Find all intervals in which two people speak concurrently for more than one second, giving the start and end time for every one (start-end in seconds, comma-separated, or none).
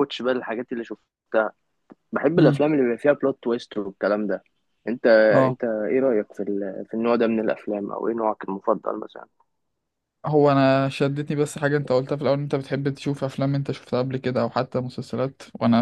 none